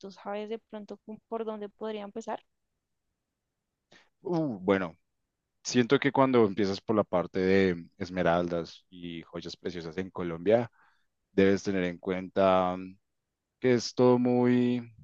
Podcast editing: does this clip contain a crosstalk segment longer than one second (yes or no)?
no